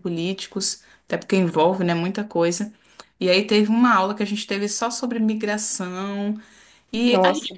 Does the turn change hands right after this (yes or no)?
no